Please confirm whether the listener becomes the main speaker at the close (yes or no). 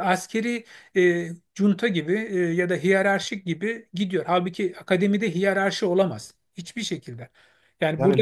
no